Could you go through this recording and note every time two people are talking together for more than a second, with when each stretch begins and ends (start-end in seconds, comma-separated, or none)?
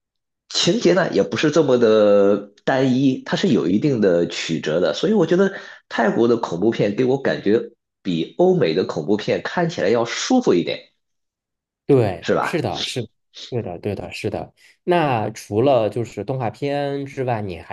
none